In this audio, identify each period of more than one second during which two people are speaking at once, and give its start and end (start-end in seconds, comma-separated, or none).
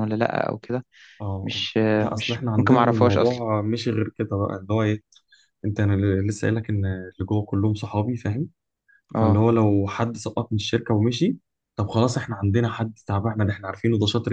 1.4-3.4